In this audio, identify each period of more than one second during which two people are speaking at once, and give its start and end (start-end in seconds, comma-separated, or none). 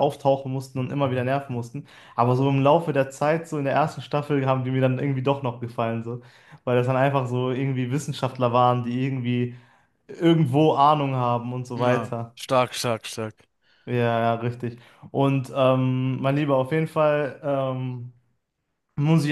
none